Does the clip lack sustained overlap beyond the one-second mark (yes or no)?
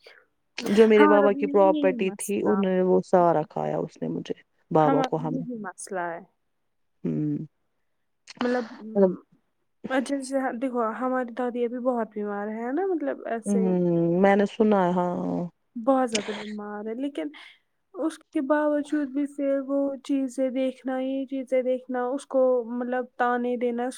no